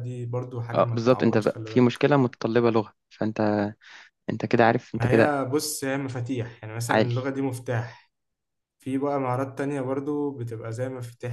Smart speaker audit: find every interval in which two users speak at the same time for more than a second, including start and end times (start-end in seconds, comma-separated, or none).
0.7-2.0